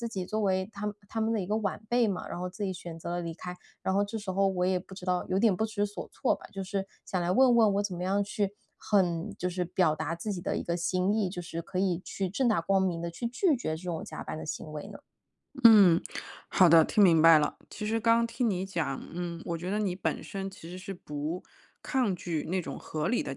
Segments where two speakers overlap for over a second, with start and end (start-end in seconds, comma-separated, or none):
none